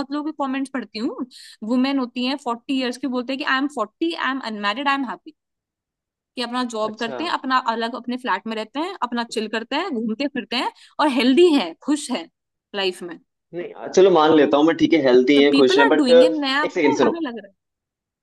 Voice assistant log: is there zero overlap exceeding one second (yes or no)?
no